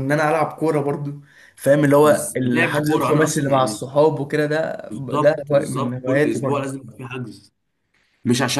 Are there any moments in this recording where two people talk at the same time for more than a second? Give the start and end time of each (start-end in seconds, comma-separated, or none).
2.0-3.8, 4.9-6.7